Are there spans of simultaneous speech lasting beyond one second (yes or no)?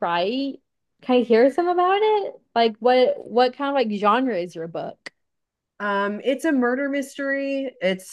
no